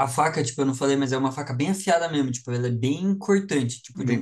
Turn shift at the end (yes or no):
no